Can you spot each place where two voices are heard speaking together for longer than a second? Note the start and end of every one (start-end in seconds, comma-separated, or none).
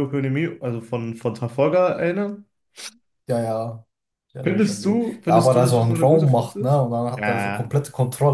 4.4-7.8